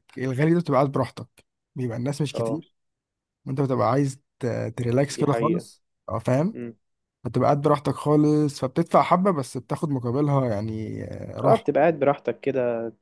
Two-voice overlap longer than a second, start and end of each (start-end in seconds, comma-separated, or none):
none